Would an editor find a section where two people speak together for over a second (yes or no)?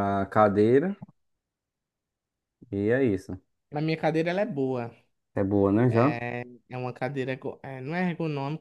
no